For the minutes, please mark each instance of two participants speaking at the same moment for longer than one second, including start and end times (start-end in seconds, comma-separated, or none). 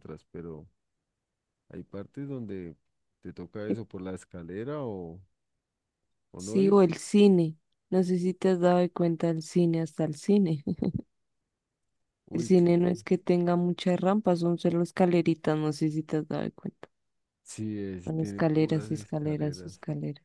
18.0-19.7